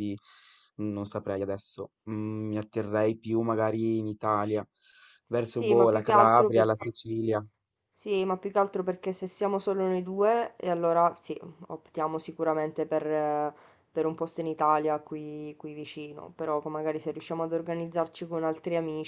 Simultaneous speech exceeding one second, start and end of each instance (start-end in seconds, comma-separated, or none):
5.5-6.7